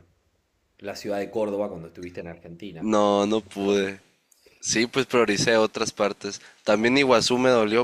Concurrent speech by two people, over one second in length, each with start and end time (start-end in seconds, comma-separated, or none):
none